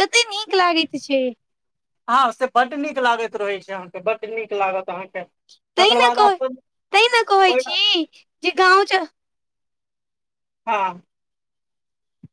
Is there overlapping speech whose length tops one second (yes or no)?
no